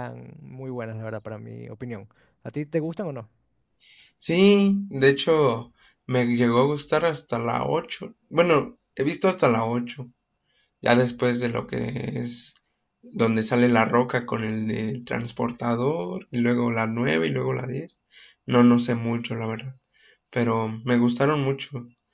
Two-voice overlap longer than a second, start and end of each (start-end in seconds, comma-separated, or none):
none